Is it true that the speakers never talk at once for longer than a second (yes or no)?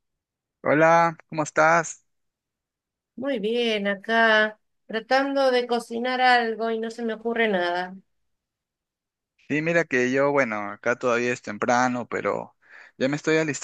yes